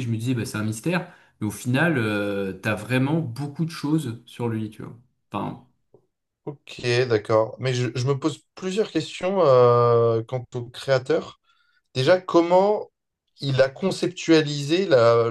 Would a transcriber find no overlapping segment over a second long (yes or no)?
yes